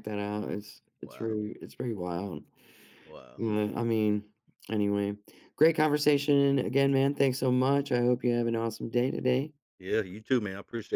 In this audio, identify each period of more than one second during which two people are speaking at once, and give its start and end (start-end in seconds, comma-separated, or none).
none